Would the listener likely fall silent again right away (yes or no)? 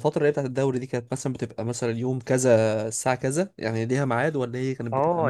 no